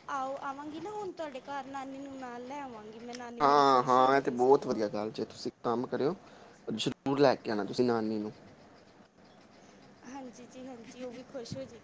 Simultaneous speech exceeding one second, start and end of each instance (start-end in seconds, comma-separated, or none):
3.4-4.8